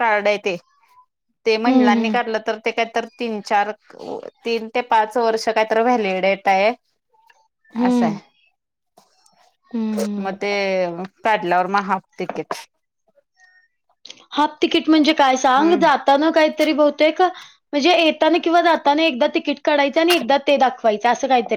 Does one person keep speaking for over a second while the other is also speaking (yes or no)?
no